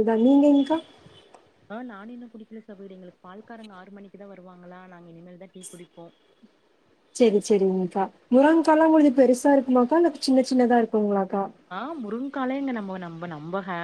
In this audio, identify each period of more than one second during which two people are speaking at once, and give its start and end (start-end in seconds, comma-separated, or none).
none